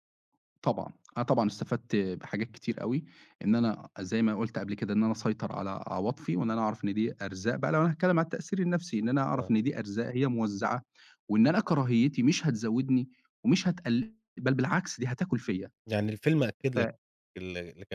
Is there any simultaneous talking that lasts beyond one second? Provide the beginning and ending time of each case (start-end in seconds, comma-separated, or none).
none